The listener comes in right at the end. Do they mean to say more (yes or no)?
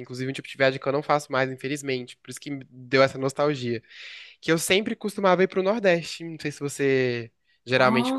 no